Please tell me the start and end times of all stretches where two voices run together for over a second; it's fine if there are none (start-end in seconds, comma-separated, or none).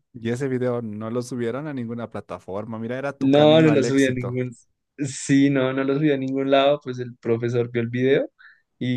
3.2-4.4